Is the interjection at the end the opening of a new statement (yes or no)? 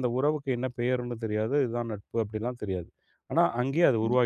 yes